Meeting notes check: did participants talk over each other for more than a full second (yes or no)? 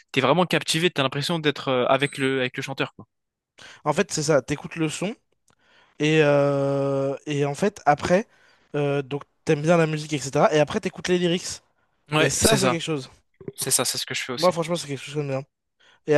no